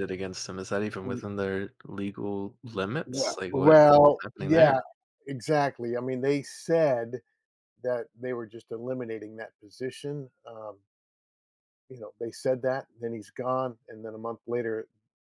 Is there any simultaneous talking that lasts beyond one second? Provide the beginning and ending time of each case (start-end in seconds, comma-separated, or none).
3.1-4.8